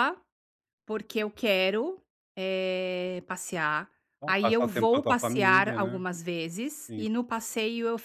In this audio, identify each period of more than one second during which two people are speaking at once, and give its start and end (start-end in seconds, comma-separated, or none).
4.2-6.0